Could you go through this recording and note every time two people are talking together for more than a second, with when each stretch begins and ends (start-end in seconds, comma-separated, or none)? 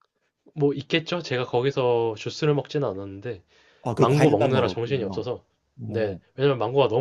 4.0-5.2